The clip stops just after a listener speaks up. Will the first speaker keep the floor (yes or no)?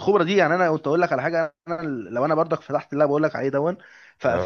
yes